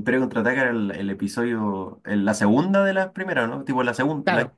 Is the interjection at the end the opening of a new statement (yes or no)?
yes